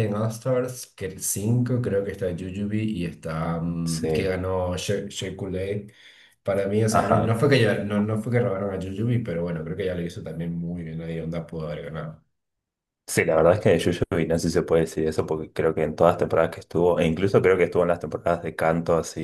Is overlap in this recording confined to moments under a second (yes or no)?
yes